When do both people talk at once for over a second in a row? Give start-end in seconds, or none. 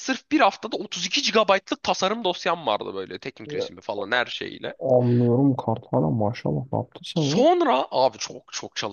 none